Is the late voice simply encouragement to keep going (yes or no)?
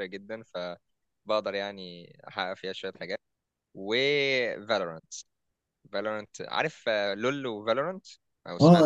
no